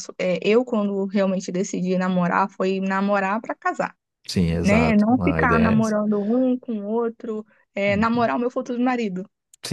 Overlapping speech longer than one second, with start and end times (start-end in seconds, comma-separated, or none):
4.6-6.0